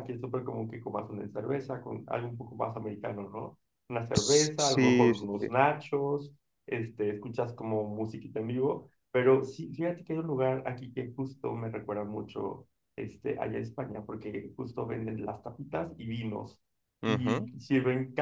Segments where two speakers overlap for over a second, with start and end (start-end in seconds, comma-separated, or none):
4.1-5.5